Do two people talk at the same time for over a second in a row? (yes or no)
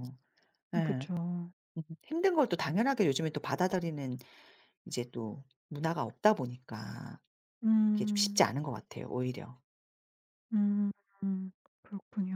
no